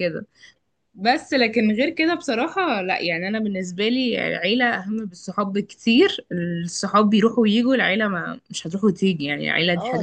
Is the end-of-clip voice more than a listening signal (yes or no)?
yes